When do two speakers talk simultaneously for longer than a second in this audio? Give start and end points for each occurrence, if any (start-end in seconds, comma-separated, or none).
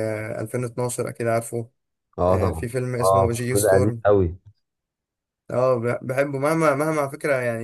2.3-4.0